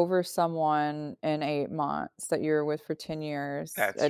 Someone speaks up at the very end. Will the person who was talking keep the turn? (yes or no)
yes